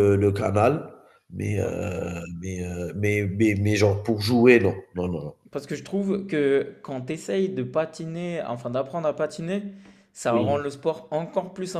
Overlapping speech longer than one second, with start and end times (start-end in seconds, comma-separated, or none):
none